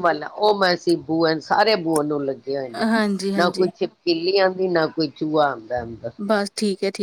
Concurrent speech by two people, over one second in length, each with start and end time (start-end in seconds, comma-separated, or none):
none